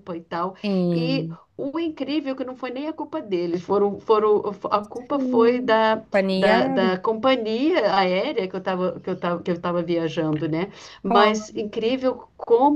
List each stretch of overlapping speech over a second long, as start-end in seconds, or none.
5.1-6.9